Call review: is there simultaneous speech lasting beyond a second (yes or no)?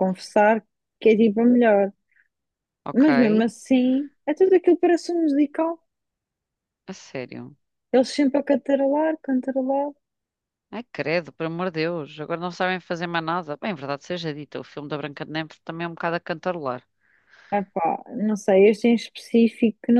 no